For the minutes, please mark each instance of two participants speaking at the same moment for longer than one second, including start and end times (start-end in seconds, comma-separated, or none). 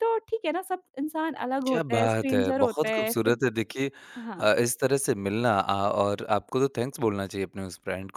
1.7-3.4